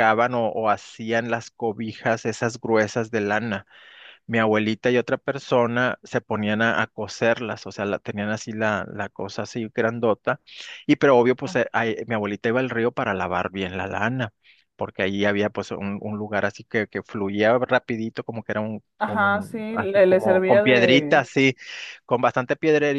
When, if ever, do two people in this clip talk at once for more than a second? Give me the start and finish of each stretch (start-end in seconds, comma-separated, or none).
19.0-21.3